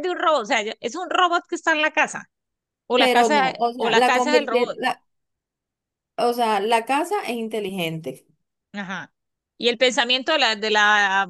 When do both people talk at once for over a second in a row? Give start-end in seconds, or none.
2.9-4.8